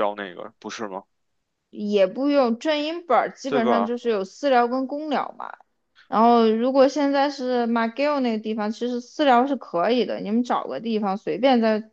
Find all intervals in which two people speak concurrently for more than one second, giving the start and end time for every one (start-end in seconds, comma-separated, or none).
none